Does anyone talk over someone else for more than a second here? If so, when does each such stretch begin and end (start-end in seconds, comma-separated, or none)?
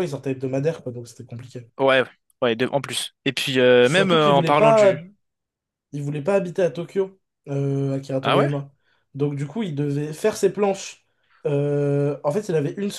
3.8-5.0